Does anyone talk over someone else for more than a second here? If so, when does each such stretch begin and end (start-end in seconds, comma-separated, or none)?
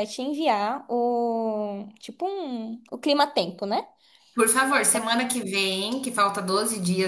none